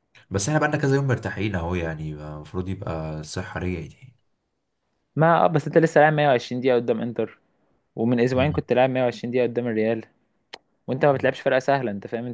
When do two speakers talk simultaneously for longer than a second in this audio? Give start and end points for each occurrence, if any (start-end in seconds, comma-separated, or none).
none